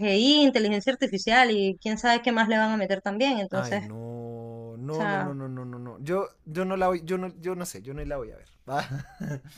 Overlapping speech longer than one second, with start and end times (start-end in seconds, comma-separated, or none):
none